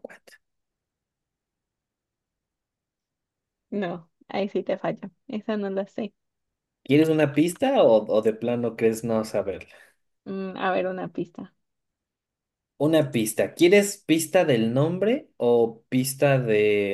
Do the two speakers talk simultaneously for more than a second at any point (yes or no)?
no